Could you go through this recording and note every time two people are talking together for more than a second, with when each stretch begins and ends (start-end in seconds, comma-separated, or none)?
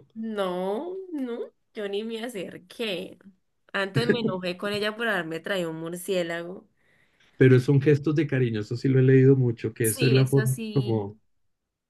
9.8-11.2